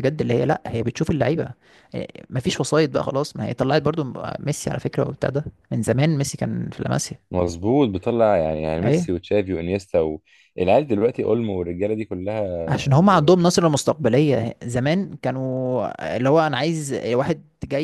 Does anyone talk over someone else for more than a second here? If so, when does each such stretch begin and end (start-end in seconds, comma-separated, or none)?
none